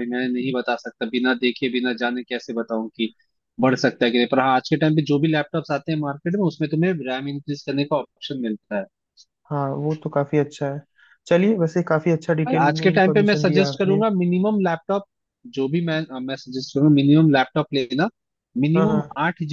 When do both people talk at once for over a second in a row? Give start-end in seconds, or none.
12.5-14.0